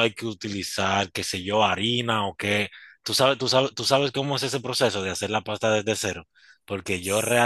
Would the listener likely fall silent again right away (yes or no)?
yes